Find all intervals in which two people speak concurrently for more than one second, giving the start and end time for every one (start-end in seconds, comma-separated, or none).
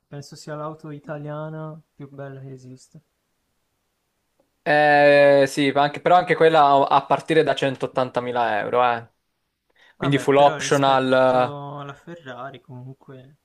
10.0-11.6